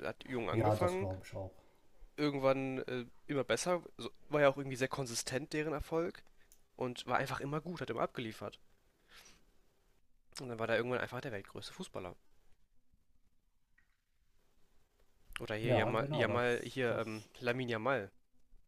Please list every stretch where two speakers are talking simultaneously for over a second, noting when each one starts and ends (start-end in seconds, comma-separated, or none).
15.6-17.3